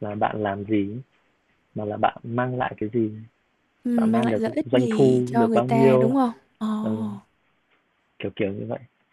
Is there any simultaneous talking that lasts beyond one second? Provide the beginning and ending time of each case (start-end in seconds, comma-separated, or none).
4.0-6.1